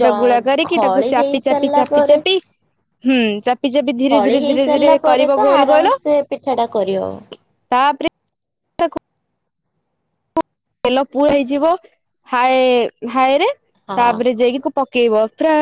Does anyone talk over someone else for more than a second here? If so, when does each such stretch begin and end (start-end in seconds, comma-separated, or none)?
0.7-2.2